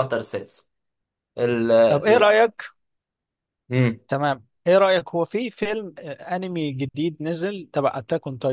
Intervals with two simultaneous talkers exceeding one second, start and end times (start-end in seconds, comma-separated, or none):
none